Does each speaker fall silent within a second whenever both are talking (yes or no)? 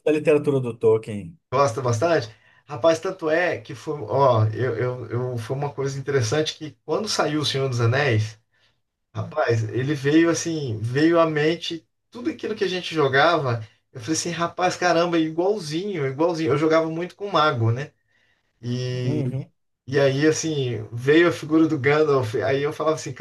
yes